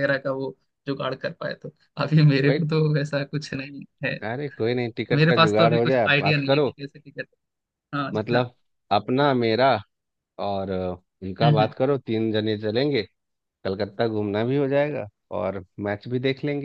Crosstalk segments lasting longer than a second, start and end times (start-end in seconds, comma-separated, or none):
5.1-6.7